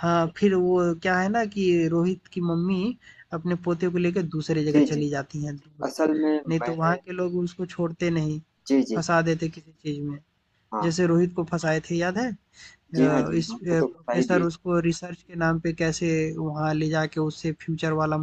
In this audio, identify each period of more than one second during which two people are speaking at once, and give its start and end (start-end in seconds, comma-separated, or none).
13.0-14.5